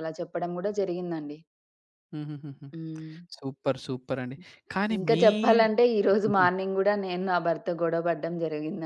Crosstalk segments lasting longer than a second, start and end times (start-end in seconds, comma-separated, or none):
none